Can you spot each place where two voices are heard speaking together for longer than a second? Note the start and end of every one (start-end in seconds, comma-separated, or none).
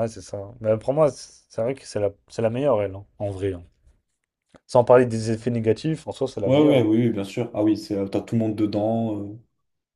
none